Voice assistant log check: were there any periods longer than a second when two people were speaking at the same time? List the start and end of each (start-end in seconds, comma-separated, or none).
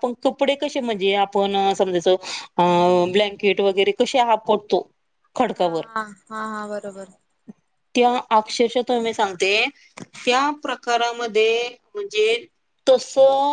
none